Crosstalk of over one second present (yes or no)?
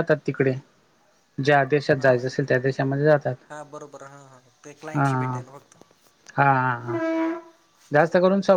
no